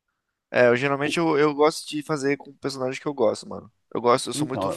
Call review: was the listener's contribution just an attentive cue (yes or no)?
yes